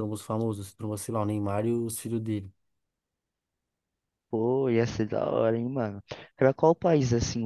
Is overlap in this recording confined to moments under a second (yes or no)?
yes